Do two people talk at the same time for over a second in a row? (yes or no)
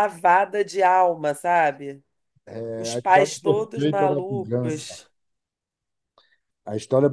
yes